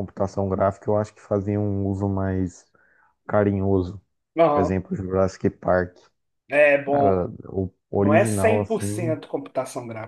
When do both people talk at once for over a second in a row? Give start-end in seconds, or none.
7.9-9.2